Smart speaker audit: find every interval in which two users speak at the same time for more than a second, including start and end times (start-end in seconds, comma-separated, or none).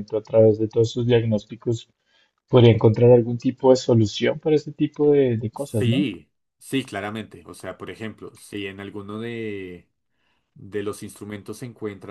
none